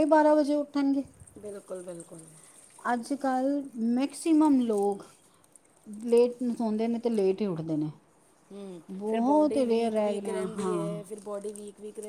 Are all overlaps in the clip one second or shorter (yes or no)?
no